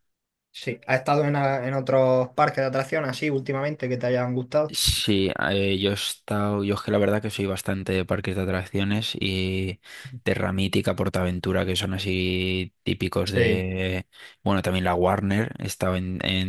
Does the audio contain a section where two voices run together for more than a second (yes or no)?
no